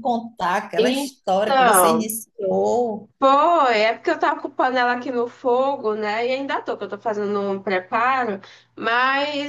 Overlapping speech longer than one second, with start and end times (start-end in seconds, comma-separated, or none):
0.8-2.1